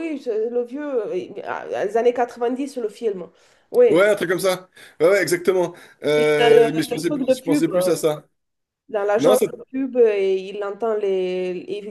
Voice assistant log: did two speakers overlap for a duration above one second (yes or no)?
yes